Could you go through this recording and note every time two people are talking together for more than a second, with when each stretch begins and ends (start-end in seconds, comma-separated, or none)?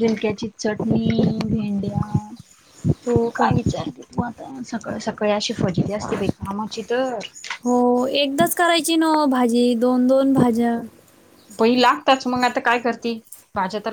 none